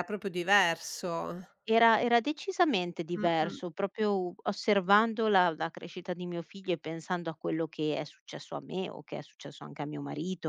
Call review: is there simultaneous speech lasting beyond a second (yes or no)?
no